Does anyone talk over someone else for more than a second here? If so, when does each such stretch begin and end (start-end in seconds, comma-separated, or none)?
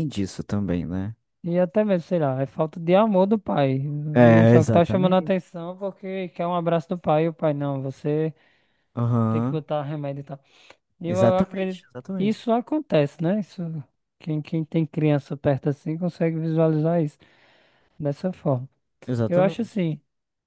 4.1-5.3, 11.1-12.5